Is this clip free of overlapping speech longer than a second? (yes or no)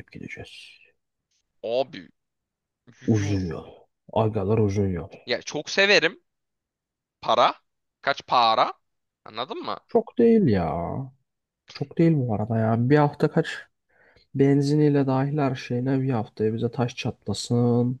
yes